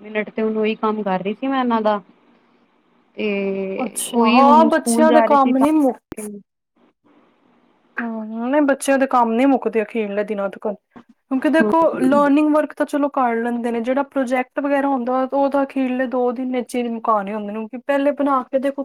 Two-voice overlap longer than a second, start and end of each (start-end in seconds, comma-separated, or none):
4.1-5.7